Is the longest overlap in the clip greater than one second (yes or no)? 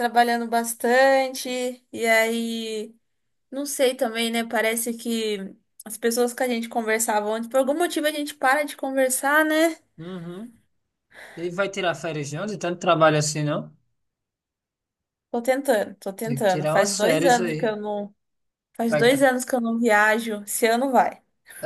yes